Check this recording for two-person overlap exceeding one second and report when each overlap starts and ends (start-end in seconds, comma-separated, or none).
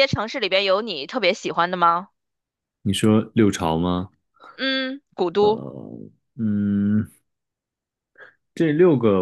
none